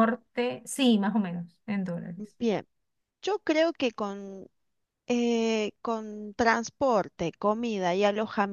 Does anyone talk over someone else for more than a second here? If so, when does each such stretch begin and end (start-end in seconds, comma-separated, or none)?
none